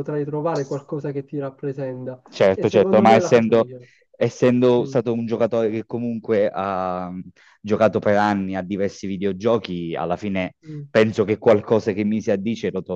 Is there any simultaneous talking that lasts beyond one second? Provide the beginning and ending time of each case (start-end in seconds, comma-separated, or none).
2.3-3.7